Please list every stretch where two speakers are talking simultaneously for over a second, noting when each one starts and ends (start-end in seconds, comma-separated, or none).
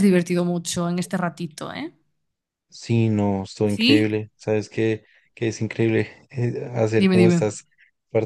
none